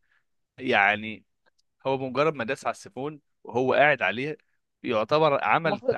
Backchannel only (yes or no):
yes